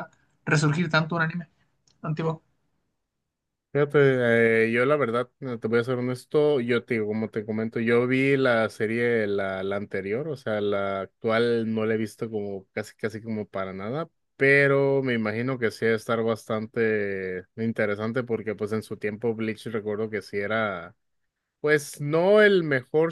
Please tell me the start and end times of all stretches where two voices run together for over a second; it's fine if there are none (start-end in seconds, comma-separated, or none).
none